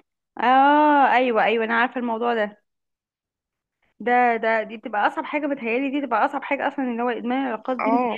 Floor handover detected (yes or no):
no